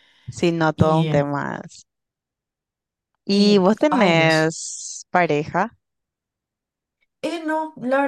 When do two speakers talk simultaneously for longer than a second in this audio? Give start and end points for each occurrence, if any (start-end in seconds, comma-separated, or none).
3.3-4.6